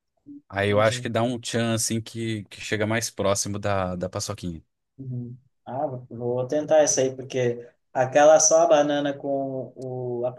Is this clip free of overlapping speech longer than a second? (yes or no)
yes